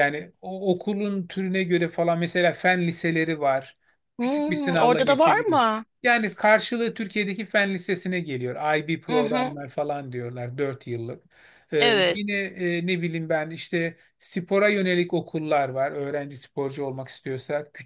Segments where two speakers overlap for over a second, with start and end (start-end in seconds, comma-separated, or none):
4.2-5.6